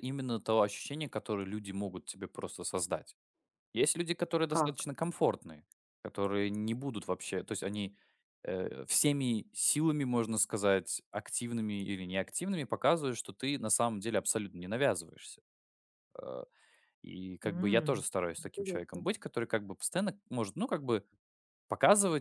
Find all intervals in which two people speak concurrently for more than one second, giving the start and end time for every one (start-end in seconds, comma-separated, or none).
17.4-19.1